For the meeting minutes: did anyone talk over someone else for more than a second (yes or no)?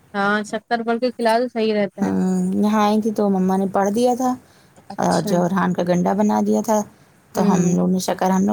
no